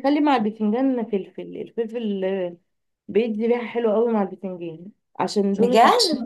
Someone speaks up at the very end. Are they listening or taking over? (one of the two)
listening